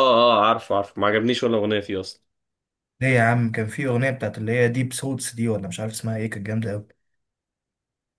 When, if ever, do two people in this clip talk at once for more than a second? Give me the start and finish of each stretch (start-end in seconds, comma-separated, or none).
none